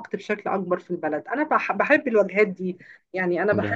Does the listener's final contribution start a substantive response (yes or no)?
no